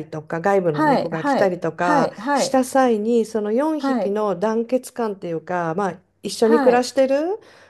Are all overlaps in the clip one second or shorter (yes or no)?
no